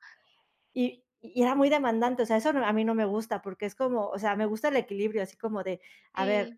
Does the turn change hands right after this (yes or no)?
no